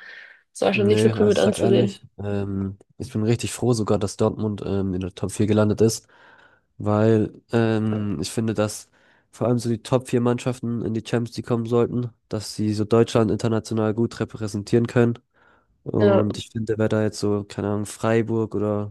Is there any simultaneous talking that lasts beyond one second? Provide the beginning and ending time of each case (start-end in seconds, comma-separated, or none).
0.7-2.0